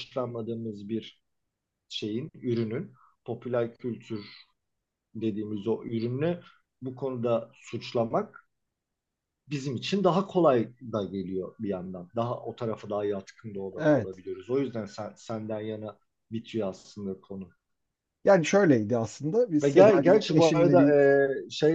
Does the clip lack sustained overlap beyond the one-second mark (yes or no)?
no